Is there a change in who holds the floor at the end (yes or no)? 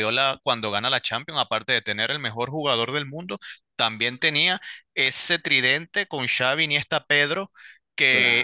no